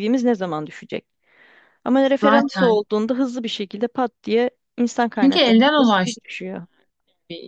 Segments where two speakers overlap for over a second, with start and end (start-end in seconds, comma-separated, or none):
5.1-6.4